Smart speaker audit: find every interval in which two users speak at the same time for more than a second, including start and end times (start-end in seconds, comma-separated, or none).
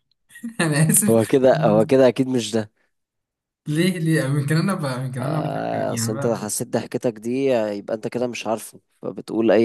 5.2-6.4